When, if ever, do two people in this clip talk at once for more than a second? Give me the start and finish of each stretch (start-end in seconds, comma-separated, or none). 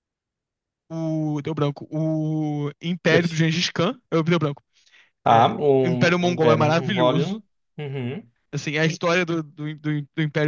5.3-7.4